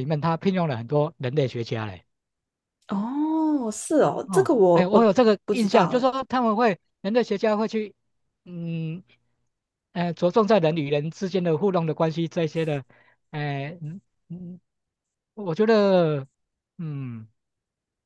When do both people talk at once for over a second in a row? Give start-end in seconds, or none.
4.2-6.1